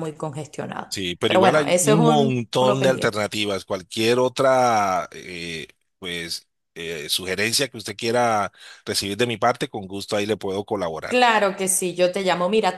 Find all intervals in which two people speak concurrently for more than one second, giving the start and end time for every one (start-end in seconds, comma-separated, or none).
0.9-3.2